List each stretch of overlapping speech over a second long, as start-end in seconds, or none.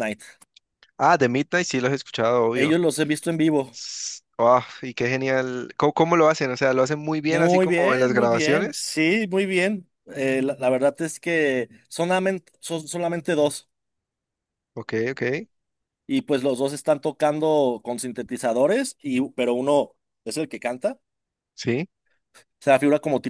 7.3-8.9